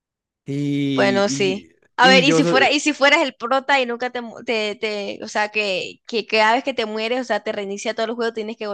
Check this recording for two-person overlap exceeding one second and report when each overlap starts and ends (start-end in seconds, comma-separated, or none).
0.9-2.8